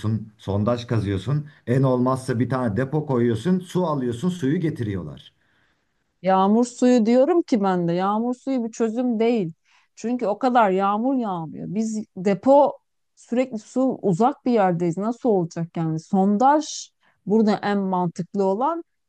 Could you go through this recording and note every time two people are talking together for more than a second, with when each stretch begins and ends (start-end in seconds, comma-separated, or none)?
none